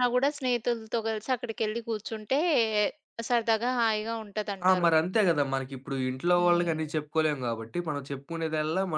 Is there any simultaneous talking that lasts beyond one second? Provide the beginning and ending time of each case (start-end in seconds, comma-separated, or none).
none